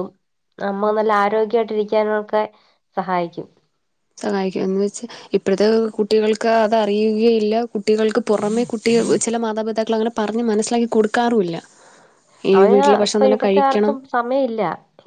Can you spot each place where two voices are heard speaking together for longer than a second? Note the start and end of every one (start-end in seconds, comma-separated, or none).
none